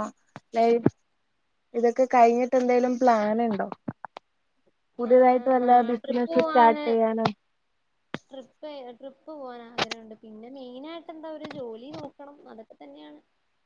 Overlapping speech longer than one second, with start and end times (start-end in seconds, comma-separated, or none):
5.1-6.7